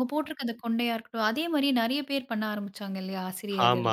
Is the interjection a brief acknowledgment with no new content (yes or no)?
no